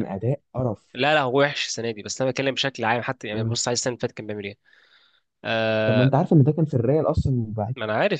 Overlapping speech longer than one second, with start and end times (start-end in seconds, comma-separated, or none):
none